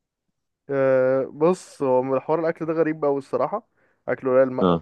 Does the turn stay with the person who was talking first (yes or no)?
yes